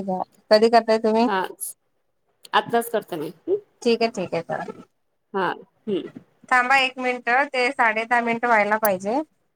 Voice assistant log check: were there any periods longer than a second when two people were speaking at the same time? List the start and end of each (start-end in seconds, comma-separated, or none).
none